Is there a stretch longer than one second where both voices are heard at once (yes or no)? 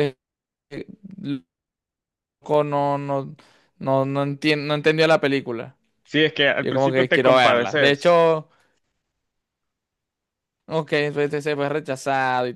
yes